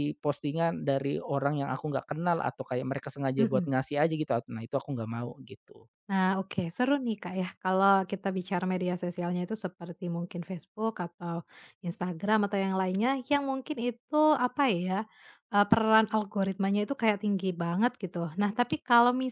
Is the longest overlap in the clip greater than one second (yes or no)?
no